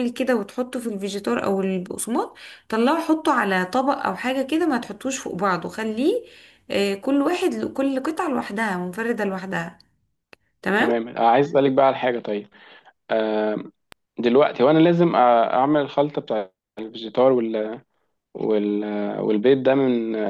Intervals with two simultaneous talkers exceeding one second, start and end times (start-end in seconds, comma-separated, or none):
none